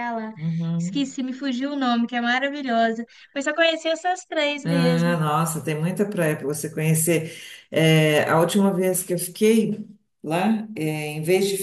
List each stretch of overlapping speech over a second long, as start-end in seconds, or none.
none